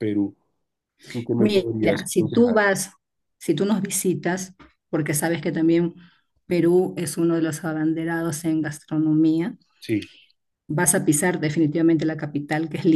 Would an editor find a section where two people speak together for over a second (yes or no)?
yes